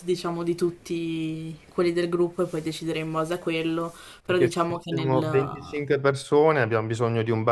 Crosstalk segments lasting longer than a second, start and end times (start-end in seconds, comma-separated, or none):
4.2-5.8